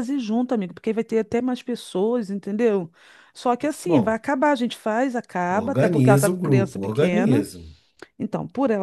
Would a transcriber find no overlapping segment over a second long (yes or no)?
no